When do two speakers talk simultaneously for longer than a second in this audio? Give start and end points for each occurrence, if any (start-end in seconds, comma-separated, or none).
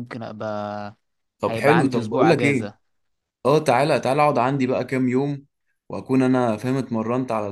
1.5-2.7